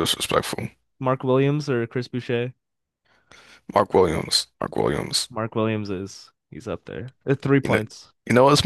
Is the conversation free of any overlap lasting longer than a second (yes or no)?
yes